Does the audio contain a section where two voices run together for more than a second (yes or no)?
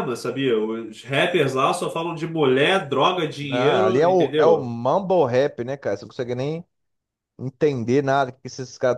yes